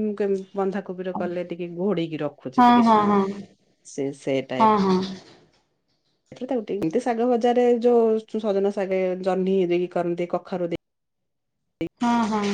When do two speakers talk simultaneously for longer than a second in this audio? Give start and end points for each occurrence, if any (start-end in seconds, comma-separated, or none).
none